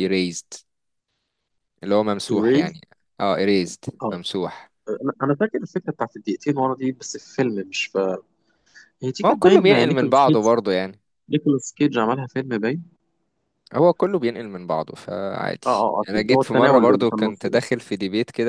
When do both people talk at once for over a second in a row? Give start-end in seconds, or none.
9.2-10.4, 15.7-17.7